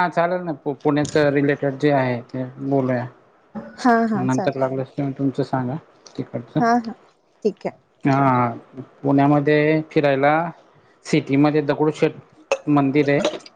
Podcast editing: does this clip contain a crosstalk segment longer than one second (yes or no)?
no